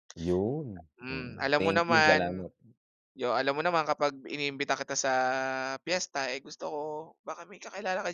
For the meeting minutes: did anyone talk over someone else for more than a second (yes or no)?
yes